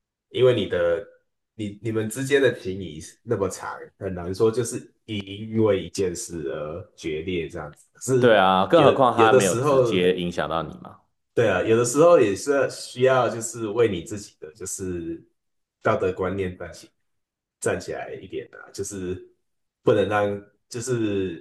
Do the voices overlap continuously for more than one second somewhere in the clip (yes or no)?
yes